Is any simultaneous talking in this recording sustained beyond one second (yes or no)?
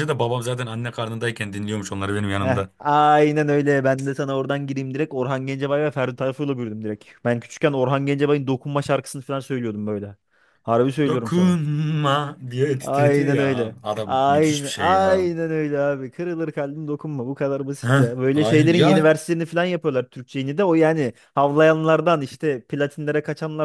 yes